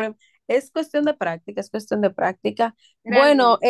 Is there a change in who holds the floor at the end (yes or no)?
no